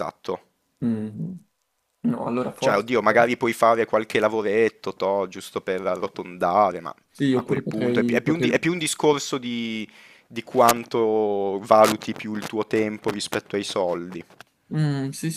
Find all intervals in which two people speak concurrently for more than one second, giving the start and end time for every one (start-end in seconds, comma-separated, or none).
7.3-8.7